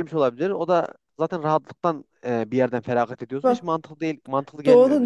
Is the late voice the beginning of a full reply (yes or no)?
yes